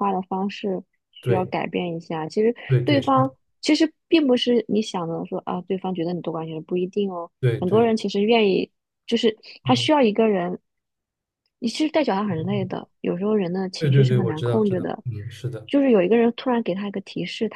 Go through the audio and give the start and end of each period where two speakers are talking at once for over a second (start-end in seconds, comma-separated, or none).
13.8-15.0